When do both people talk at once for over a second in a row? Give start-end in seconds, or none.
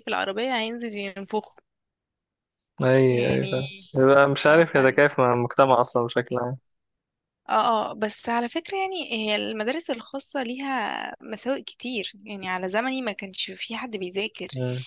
none